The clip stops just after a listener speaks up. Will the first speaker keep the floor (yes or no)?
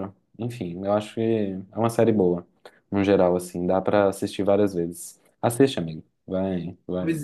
no